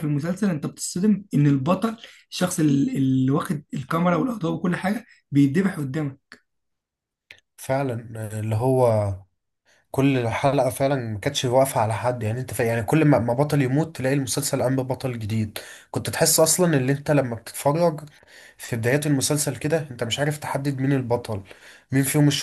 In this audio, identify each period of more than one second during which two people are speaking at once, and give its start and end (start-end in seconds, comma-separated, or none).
none